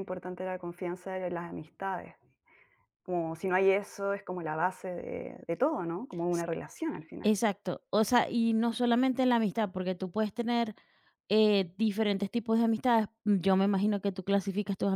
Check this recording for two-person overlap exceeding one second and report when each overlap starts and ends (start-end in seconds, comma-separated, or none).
none